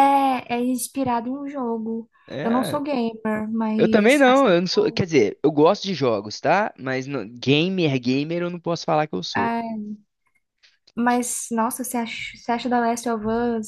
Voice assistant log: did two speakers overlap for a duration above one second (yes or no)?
yes